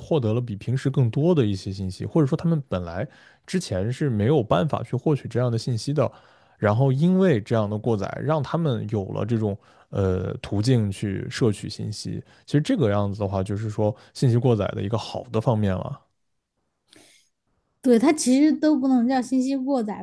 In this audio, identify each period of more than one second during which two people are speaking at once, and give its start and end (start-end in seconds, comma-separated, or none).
none